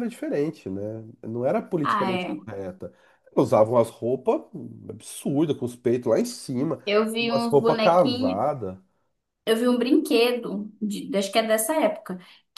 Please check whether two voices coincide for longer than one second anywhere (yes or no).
yes